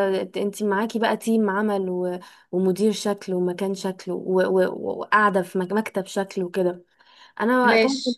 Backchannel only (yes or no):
yes